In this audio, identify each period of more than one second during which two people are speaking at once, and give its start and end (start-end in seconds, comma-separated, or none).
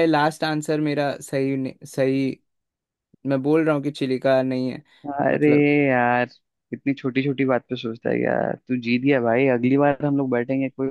none